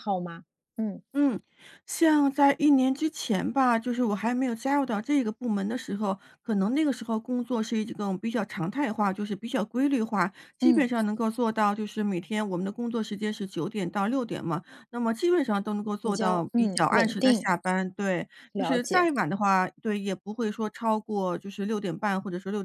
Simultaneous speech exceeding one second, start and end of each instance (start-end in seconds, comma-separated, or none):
16.0-17.5